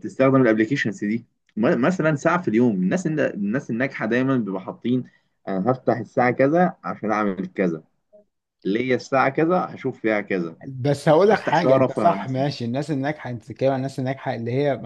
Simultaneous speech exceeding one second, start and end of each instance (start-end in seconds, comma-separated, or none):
11.3-12.5